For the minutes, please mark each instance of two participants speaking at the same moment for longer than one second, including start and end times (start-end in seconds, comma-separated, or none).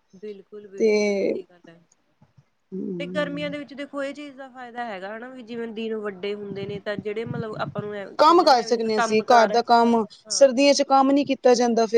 8.2-10.5